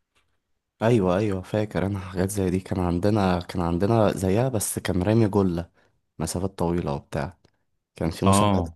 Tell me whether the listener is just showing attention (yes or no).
yes